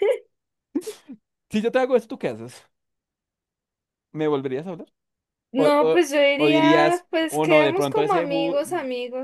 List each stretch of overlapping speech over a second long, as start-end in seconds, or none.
5.5-8.6